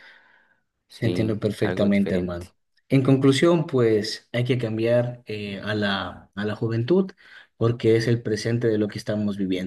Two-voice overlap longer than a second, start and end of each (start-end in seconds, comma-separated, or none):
1.0-2.5